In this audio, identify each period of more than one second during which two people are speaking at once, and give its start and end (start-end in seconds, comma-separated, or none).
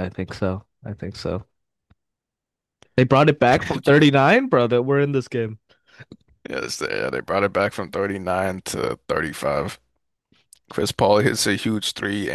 none